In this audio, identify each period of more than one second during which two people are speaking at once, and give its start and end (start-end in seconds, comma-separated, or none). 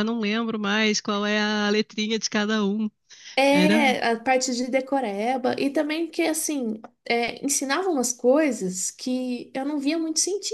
none